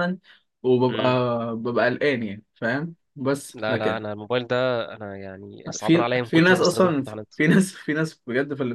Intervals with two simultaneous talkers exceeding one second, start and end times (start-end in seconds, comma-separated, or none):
5.8-7.3